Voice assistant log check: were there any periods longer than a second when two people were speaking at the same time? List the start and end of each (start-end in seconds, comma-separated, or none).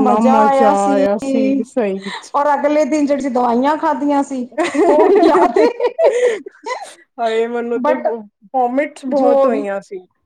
none